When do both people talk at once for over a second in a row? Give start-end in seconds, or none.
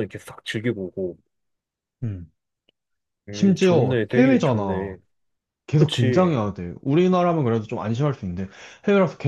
3.3-5.0